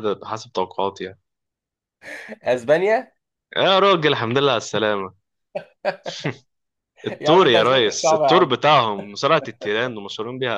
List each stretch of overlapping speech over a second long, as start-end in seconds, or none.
7.2-8.6